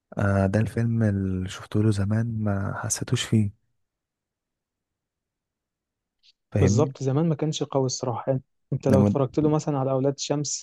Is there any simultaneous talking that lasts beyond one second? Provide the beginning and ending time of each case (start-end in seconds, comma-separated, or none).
none